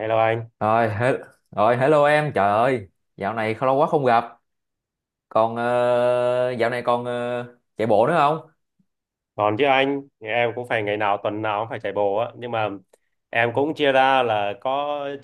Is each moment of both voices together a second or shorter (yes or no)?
yes